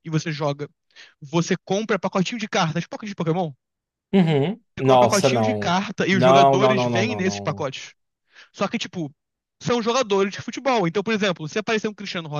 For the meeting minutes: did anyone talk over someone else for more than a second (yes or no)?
yes